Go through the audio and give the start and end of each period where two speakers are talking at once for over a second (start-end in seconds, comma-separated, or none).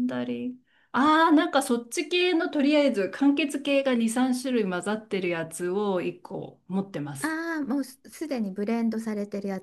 none